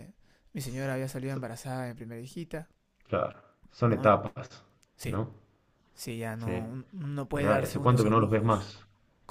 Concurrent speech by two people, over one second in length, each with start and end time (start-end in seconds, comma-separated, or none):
7.3-8.8